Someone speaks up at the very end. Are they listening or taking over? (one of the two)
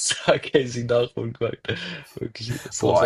taking over